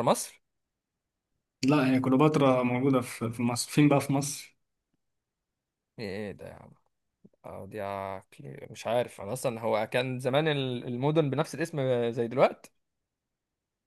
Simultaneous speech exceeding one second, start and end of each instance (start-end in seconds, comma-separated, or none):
none